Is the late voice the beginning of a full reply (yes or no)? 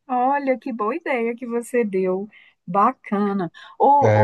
no